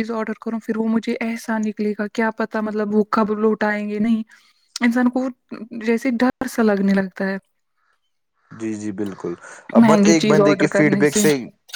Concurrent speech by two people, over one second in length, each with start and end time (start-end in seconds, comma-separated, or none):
9.8-11.0